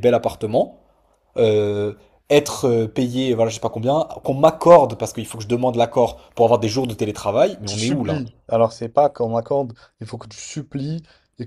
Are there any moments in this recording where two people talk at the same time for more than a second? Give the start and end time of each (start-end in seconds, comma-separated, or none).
none